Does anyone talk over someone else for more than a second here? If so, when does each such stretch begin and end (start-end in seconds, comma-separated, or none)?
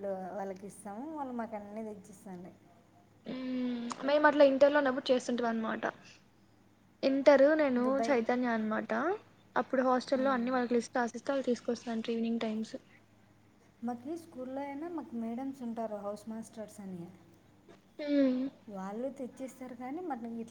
none